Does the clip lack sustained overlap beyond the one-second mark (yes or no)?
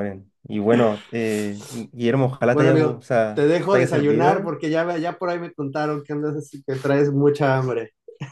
no